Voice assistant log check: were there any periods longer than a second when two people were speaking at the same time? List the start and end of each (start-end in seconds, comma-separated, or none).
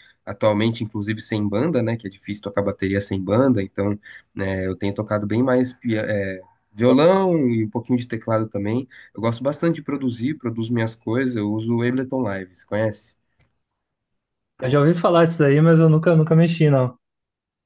none